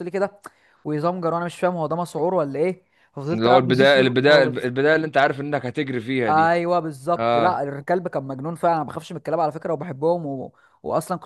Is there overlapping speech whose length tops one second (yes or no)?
yes